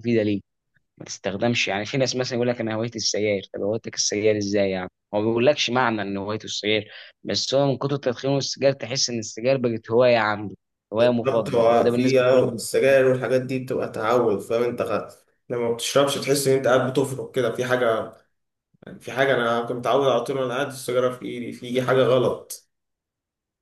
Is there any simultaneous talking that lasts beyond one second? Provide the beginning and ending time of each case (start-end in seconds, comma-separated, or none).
11.0-12.4